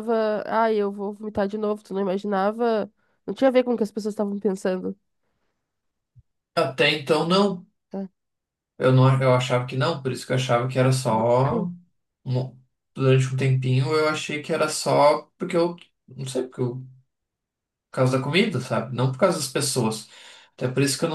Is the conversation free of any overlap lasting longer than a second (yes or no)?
yes